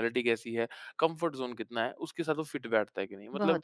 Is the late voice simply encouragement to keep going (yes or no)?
yes